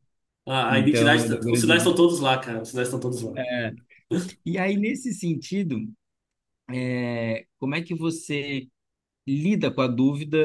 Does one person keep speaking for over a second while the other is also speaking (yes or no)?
yes